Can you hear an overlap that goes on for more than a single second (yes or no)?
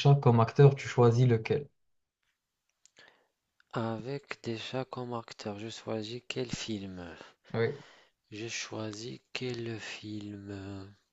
no